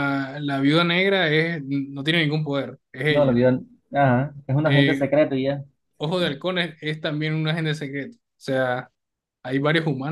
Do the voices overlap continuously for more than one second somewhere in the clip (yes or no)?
no